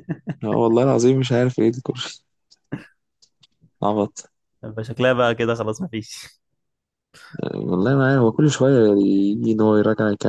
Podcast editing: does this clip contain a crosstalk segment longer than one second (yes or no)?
no